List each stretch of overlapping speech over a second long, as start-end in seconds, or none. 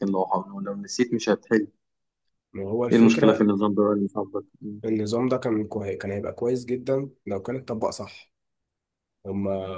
none